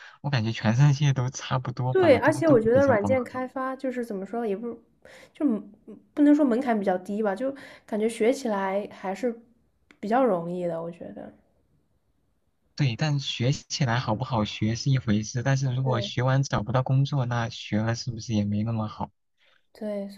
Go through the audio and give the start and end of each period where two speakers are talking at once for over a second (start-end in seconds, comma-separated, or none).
1.9-3.4